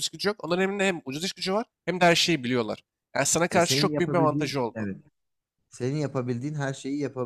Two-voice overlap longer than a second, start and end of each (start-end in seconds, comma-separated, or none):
3.5-4.9